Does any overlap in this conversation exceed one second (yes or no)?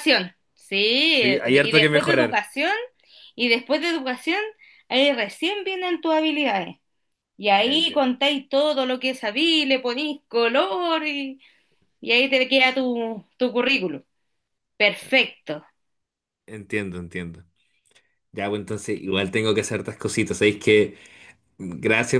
yes